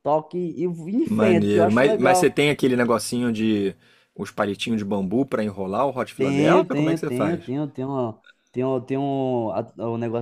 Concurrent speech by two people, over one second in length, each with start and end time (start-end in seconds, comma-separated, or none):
1.1-2.4, 6.2-7.4